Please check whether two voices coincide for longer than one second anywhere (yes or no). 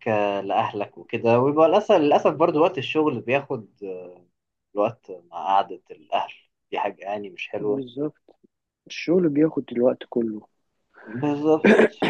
no